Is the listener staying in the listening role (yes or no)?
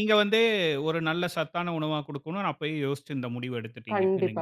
no